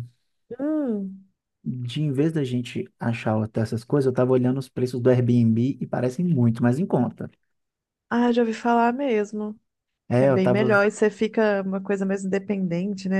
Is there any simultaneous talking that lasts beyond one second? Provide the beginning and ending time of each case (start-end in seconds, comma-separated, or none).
none